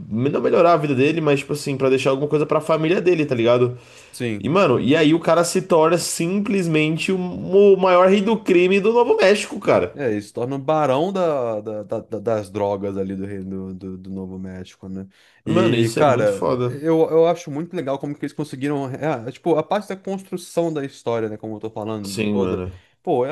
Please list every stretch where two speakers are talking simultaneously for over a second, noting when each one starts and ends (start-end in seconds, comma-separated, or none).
15.4-16.8